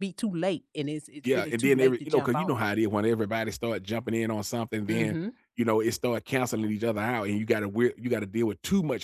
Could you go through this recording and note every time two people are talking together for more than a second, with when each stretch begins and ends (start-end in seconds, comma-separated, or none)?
1.2-2.6